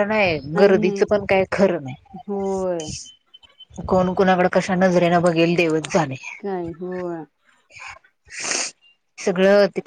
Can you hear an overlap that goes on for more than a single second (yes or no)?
no